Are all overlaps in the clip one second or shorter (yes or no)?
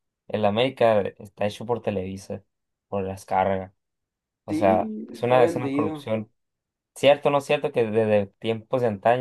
no